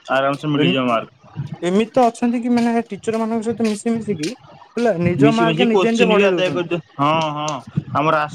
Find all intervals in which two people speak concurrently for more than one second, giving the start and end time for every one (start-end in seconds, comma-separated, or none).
5.2-6.8